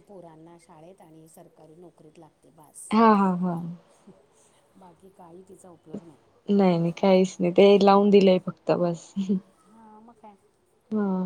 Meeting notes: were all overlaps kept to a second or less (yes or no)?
yes